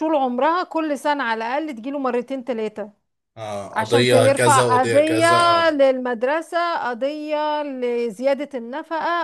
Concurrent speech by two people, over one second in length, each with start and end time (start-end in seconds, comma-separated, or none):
3.7-5.3